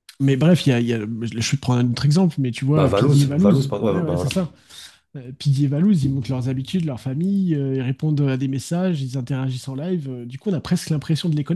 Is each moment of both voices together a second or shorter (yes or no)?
no